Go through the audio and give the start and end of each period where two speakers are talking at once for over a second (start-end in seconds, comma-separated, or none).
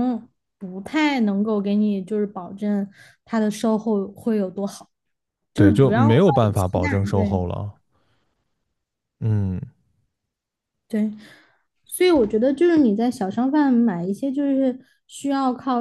5.5-7.4